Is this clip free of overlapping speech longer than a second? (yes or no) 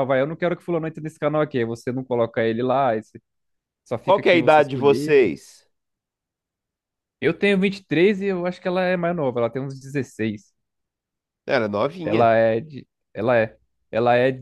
no